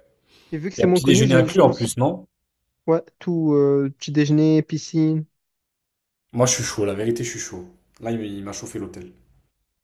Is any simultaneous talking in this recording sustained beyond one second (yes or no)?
yes